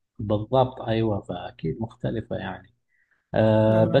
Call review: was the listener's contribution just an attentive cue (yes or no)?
yes